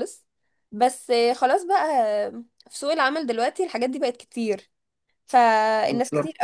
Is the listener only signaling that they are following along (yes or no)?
yes